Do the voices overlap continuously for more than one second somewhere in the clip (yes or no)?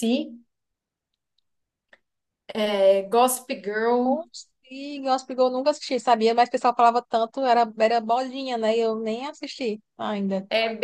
no